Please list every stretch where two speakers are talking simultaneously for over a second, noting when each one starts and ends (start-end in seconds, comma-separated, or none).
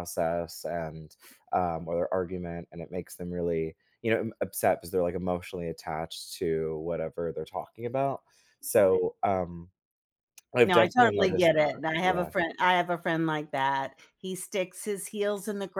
10.7-12.3